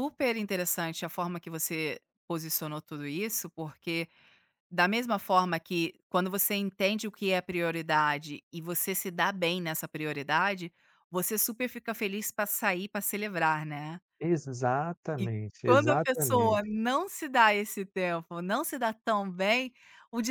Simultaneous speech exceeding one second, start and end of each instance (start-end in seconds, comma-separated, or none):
15.2-16.6